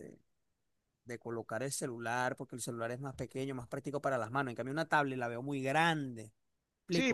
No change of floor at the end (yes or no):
no